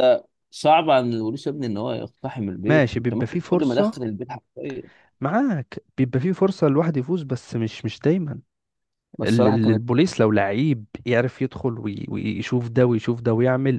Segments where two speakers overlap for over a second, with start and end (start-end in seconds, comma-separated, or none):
2.7-4.0